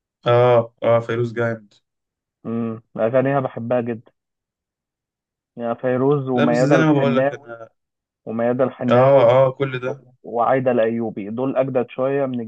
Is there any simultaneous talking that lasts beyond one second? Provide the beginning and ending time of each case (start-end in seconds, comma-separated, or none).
6.3-7.5